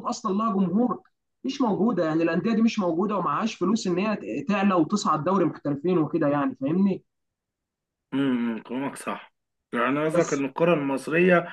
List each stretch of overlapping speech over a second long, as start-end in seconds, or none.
none